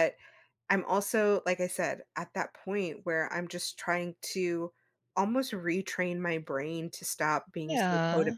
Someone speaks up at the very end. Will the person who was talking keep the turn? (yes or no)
yes